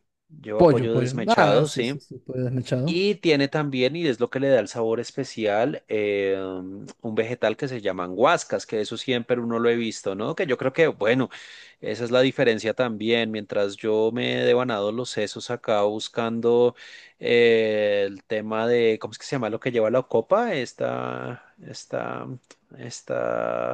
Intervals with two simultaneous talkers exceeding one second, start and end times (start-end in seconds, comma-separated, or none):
0.6-2.0